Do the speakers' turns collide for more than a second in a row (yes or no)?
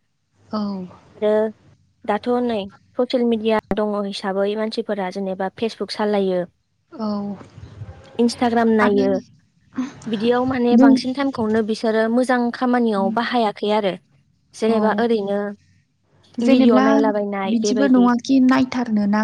no